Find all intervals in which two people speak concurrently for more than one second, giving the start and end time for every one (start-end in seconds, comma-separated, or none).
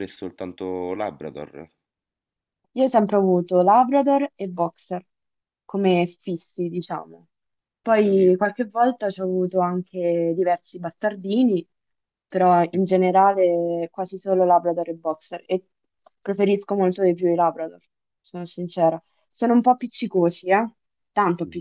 none